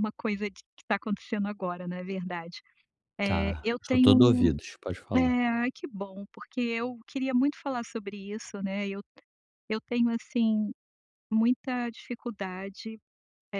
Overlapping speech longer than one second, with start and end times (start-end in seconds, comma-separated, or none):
3.2-4.5